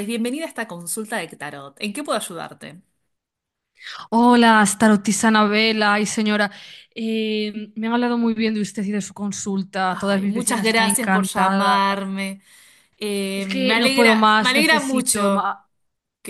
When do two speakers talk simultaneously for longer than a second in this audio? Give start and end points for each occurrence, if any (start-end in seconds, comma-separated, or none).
9.9-11.8, 13.3-15.5